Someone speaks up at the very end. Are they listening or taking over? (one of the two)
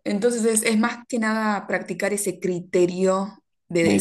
taking over